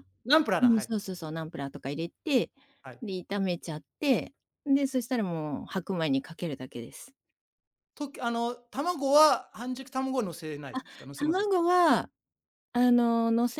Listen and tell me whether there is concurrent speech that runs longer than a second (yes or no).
no